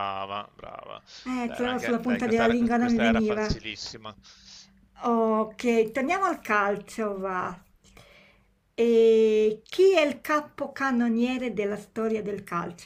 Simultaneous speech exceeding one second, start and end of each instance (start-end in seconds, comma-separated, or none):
1.4-3.6